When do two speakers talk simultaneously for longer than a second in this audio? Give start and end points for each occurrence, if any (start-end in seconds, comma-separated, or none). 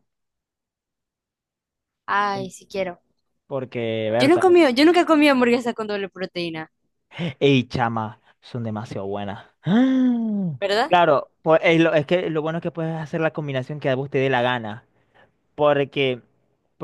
none